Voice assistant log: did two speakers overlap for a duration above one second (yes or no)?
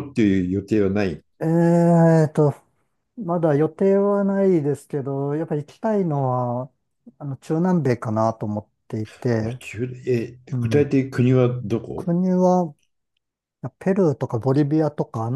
no